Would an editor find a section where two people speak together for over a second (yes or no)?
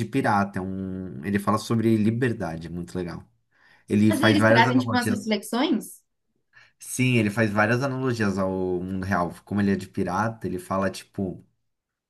yes